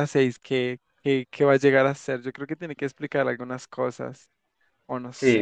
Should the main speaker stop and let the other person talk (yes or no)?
yes